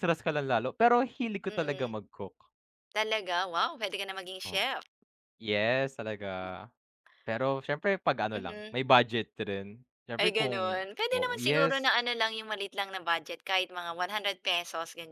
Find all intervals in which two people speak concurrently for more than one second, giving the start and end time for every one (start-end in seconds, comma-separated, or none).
10.2-11.9